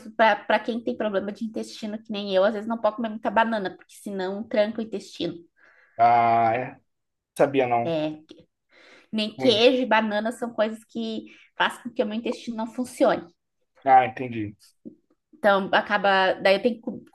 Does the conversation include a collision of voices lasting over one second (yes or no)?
no